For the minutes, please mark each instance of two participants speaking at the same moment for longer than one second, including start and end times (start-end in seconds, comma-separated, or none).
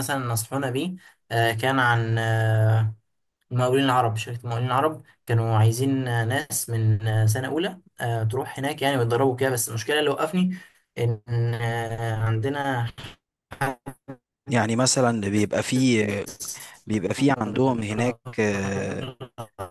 none